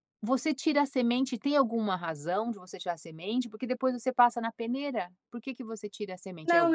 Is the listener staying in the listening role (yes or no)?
no